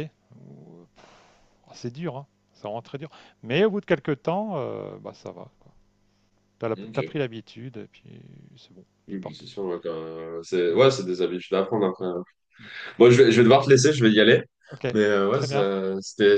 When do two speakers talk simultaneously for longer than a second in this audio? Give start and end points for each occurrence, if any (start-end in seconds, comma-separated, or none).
none